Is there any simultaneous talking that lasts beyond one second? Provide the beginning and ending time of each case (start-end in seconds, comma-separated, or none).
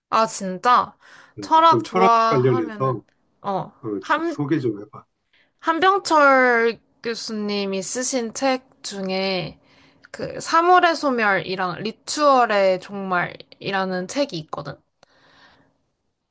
1.4-3.0